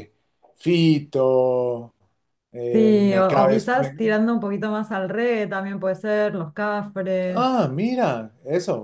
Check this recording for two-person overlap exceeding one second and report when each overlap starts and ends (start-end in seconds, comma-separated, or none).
2.7-4.2